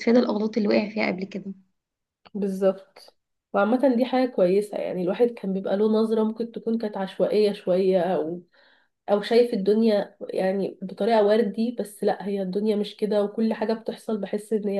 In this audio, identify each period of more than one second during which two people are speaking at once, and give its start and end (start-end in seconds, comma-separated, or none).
none